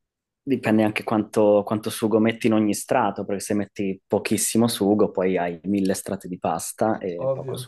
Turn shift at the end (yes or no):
yes